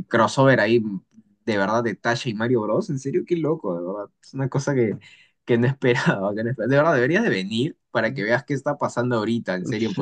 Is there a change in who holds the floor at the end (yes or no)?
yes